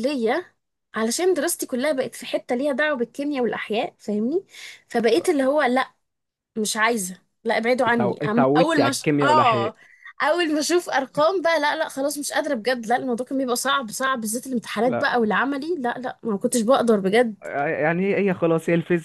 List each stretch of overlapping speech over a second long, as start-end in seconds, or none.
7.9-9.7